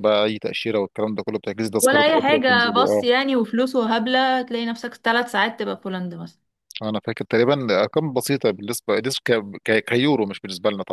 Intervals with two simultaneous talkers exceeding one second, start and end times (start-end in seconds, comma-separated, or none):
1.8-3.1